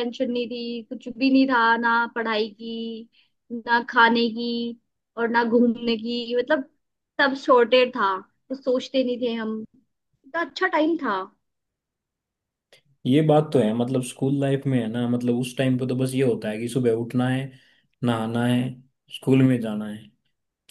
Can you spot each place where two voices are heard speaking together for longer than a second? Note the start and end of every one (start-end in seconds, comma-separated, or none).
none